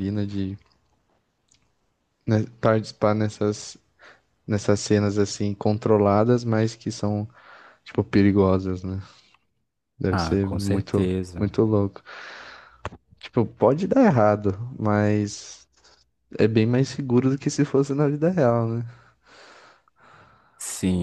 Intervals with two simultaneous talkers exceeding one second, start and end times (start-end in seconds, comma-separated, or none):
10.1-11.5